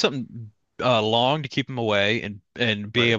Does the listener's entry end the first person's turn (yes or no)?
no